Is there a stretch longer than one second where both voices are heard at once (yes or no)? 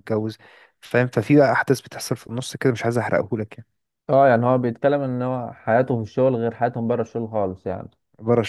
no